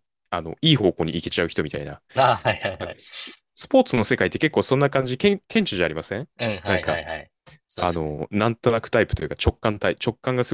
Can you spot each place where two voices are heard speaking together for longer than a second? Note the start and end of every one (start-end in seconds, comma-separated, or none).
none